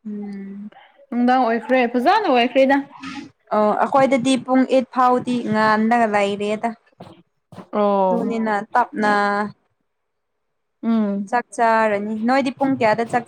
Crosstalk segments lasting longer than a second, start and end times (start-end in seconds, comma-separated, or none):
none